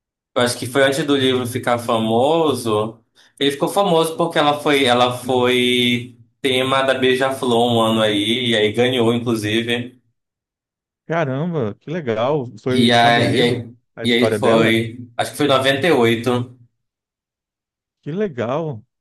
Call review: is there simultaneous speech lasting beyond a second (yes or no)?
yes